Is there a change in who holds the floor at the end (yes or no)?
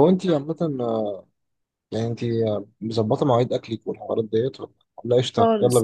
yes